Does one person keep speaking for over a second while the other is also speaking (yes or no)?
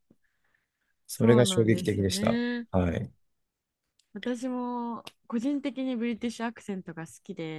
yes